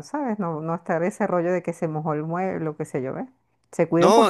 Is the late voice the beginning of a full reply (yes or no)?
yes